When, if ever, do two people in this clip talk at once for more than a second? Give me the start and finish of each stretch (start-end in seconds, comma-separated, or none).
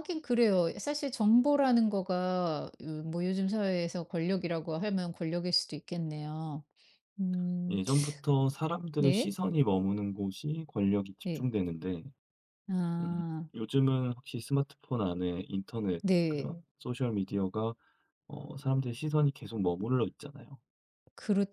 none